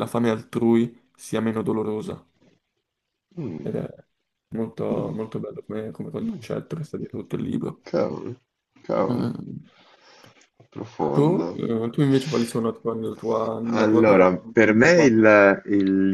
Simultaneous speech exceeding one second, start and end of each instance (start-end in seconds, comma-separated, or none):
13.7-15.3